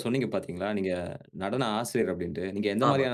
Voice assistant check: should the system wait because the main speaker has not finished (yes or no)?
yes